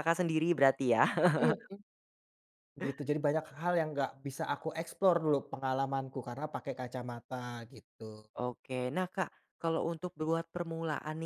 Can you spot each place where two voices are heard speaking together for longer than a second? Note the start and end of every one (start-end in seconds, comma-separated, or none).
none